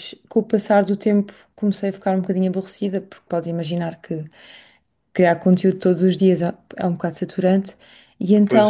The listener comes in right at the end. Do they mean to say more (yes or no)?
no